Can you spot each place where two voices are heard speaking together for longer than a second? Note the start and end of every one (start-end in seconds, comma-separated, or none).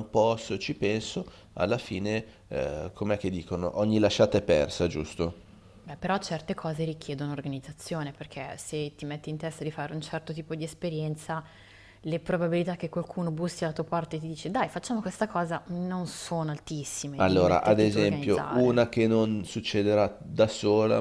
17.2-18.8